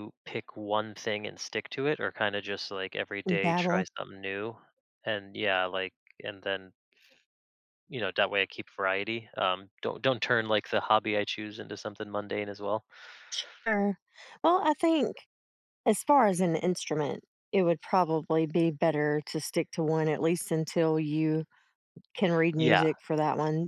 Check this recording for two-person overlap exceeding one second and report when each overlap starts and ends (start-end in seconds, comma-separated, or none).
none